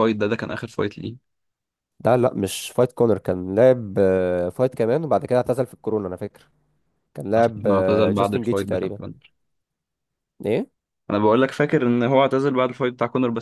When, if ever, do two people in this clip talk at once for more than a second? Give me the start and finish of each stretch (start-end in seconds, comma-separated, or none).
7.4-9.0